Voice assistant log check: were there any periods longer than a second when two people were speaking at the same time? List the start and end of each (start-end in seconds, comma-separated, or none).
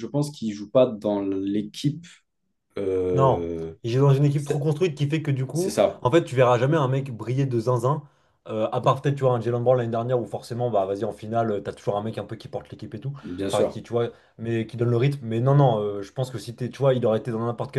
none